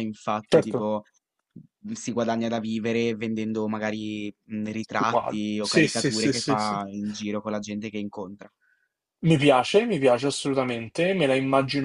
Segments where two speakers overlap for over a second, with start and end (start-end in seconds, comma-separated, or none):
5.0-6.8